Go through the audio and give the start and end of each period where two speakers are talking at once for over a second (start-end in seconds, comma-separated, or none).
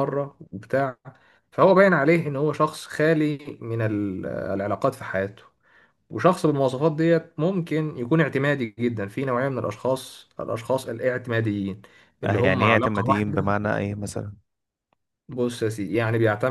12.2-13.4